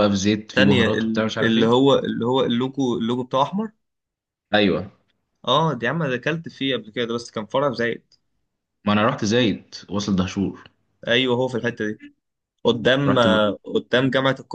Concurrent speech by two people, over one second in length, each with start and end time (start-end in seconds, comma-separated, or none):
0.5-1.9